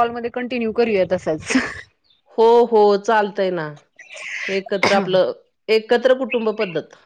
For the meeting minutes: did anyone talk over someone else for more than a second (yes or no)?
no